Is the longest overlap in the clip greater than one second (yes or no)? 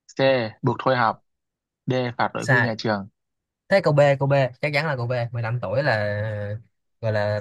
no